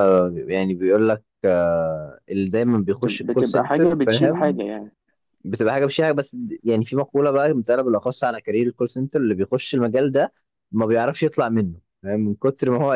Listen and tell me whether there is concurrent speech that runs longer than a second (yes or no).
yes